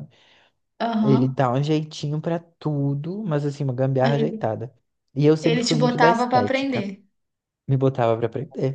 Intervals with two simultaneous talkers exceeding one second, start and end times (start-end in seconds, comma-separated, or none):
5.4-6.8